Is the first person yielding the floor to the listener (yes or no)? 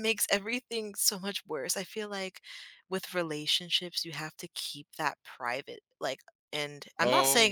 no